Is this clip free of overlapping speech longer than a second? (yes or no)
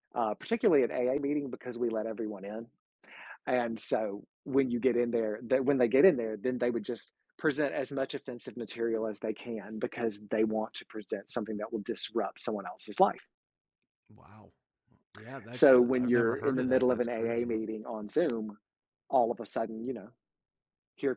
no